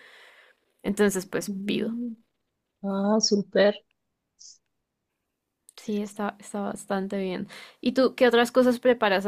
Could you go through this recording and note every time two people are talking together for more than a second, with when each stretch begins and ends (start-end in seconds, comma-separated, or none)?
none